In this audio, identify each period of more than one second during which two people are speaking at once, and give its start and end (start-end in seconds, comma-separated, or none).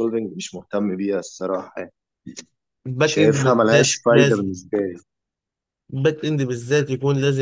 3.0-4.5